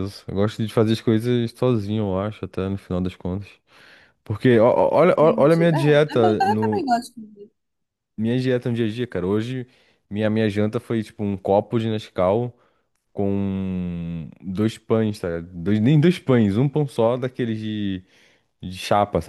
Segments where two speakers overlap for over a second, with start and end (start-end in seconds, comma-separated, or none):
5.0-6.9